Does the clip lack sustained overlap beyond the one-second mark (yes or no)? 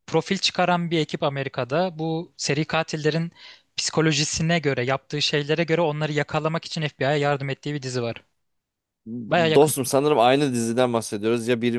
yes